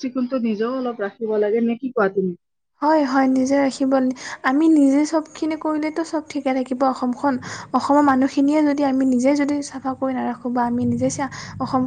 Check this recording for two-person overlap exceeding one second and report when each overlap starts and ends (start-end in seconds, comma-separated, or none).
none